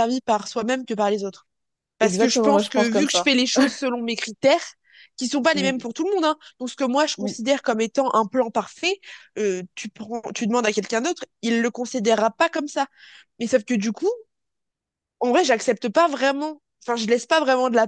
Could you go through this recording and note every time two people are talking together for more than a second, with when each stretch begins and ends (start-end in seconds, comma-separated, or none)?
2.0-3.3